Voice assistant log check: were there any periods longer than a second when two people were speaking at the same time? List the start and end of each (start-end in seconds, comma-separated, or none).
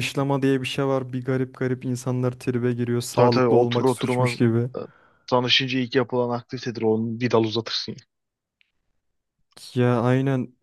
3.2-4.4